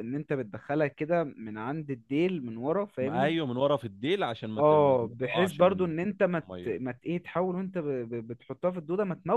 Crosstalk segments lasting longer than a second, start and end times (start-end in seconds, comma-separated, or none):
4.6-6.8